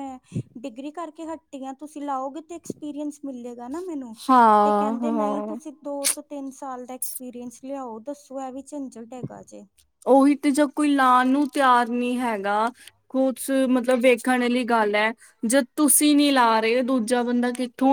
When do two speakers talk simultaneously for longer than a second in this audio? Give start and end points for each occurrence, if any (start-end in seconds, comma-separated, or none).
none